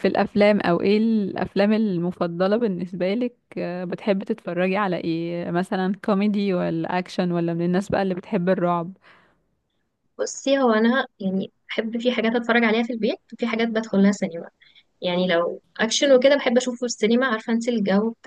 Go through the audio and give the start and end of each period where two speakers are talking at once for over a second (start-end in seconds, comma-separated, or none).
none